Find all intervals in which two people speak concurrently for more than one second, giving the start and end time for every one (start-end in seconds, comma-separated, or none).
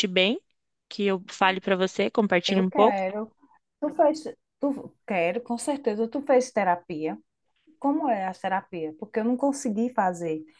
none